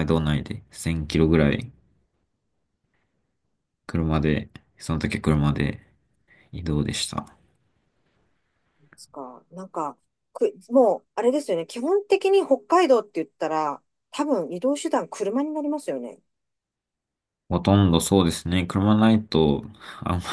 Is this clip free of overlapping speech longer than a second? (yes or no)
yes